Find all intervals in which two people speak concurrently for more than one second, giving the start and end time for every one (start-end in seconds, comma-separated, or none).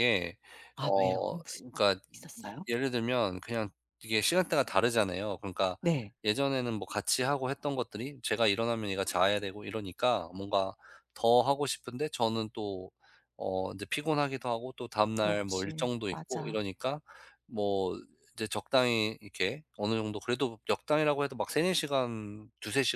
15.1-16.6